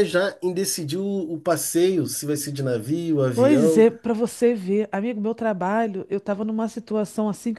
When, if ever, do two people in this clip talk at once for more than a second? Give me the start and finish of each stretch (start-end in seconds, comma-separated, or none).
none